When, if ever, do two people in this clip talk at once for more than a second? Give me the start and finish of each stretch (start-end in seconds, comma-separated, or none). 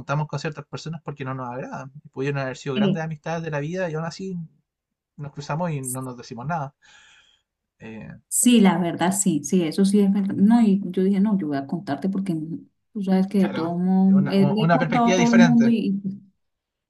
13.4-15.7